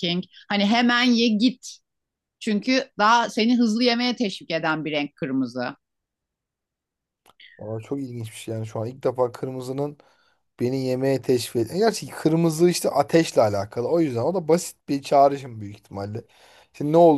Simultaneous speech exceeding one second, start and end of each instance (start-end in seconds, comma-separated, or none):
none